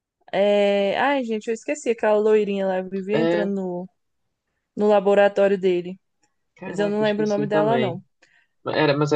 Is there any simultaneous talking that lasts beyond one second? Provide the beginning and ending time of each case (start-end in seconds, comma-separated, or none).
6.7-8.0